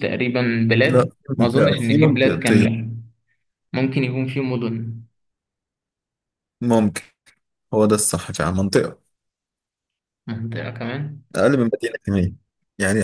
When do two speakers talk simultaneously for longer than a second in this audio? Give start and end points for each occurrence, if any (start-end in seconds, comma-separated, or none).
0.8-2.7